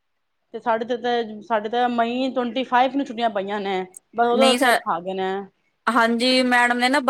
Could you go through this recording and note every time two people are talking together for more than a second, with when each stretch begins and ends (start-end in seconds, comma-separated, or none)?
none